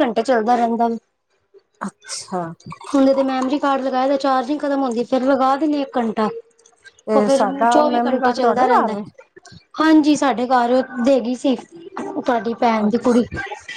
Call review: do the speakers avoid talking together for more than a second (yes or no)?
no